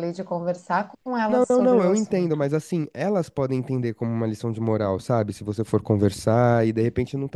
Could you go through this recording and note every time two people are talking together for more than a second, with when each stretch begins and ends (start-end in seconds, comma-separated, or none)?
1.3-2.5